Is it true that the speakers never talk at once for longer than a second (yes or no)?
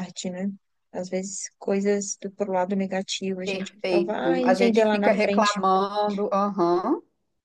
no